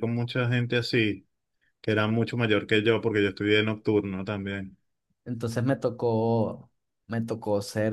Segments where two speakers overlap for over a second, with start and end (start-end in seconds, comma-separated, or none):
none